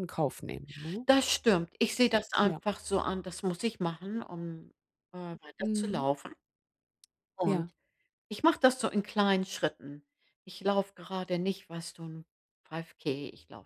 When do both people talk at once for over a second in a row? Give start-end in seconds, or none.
none